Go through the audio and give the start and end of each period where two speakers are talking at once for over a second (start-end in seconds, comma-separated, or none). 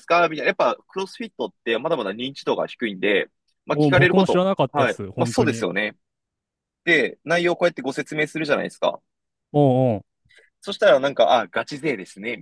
3.7-5.7